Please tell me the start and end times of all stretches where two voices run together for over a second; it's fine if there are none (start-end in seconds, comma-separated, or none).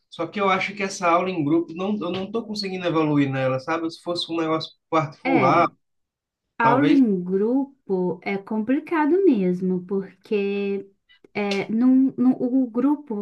none